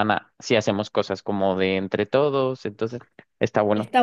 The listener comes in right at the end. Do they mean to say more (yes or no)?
yes